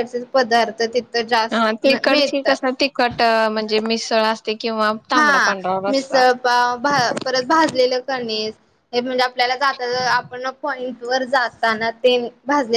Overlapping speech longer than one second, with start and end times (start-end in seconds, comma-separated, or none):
none